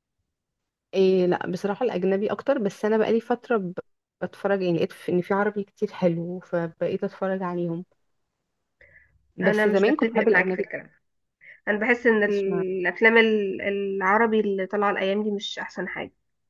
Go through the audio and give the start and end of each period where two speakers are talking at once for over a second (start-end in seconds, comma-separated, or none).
9.4-10.7